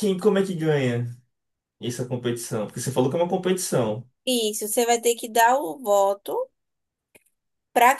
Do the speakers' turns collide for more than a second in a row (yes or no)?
no